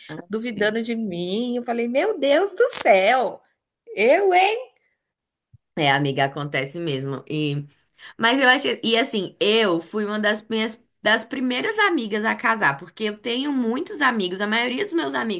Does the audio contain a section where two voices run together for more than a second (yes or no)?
no